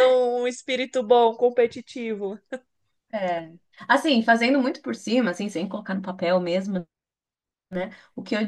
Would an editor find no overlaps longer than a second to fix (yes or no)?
yes